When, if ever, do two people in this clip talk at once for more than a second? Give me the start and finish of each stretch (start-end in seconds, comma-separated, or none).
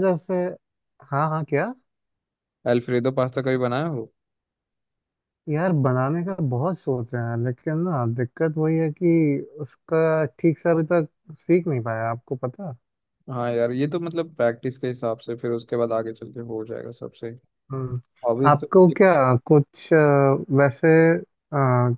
none